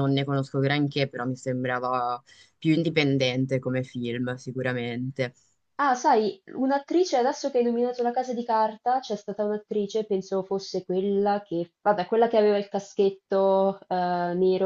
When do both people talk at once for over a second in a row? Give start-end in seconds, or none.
none